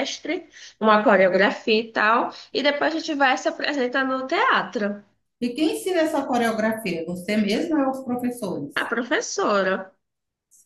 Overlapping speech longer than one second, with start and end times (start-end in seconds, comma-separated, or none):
none